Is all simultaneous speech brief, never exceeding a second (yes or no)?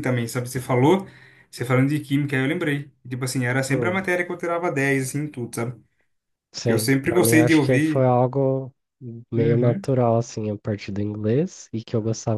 no